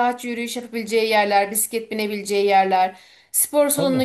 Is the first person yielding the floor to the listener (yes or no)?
no